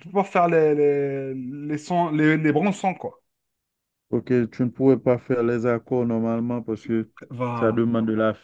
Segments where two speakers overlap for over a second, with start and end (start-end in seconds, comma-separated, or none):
none